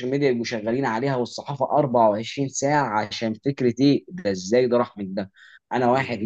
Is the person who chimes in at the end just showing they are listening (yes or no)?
yes